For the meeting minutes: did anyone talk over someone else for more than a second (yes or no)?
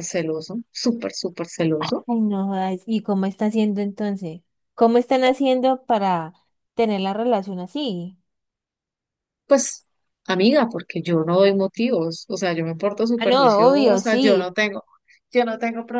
yes